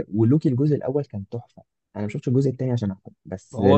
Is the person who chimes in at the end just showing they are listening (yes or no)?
no